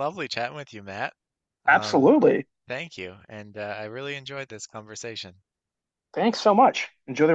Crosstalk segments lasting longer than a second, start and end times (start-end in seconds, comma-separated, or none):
none